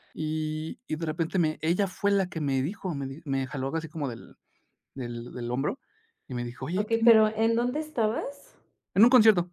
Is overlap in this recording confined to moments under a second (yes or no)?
yes